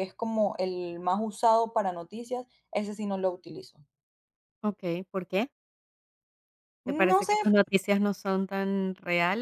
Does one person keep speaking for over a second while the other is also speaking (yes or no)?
no